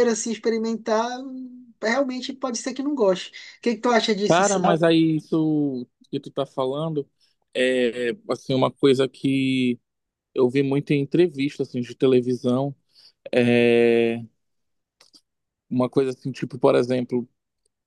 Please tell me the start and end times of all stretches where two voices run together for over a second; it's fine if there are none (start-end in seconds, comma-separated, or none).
none